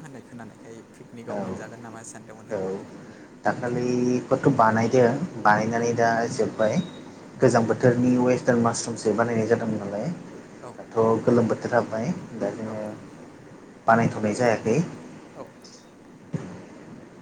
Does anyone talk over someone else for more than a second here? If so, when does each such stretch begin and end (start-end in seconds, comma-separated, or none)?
none